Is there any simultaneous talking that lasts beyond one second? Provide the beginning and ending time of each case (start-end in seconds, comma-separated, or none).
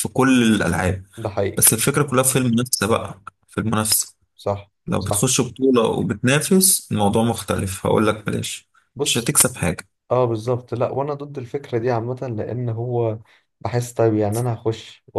none